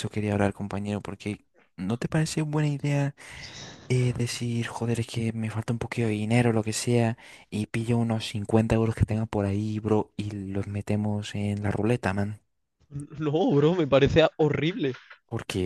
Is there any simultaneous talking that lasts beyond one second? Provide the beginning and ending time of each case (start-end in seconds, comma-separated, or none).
none